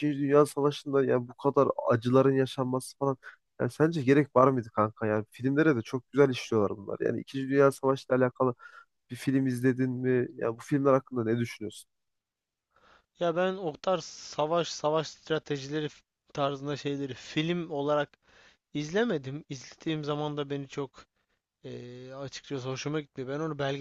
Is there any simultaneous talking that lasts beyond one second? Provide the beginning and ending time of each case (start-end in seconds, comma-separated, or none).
none